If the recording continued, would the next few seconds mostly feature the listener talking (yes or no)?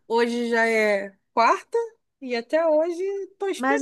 yes